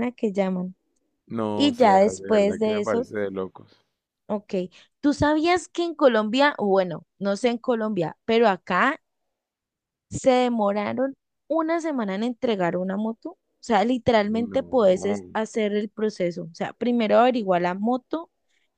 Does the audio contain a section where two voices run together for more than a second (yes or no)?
yes